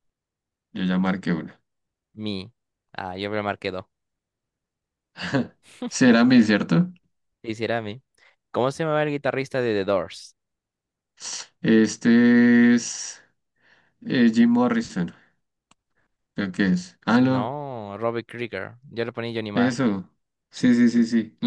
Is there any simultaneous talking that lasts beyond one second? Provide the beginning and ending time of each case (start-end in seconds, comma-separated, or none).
none